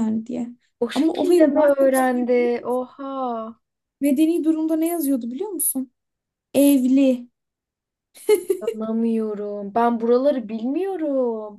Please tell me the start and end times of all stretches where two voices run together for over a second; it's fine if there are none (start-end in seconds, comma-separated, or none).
0.9-2.5